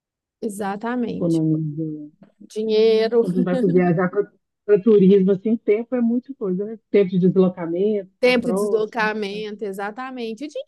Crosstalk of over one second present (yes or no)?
yes